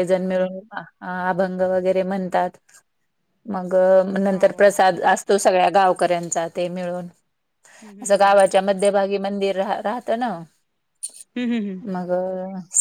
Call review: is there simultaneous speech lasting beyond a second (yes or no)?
no